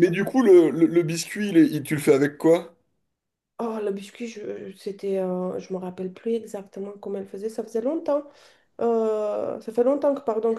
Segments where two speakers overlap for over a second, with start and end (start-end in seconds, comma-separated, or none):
none